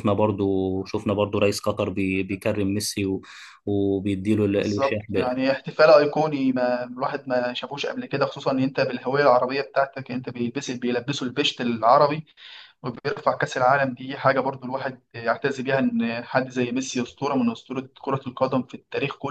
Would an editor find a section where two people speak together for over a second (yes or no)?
no